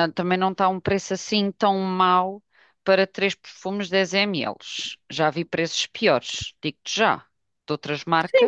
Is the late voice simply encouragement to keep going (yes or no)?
no